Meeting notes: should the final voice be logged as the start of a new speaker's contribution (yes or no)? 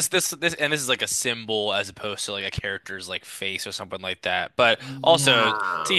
no